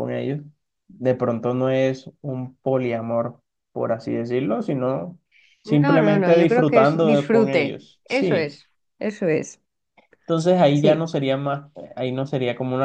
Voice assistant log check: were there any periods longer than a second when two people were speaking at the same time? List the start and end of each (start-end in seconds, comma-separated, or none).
5.7-8.6